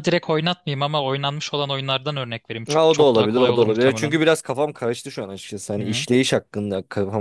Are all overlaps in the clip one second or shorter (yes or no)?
no